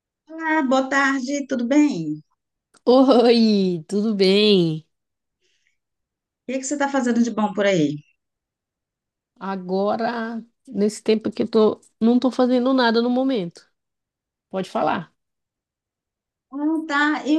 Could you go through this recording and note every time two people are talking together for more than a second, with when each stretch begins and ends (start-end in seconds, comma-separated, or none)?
none